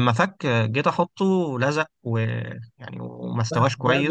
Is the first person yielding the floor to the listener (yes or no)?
no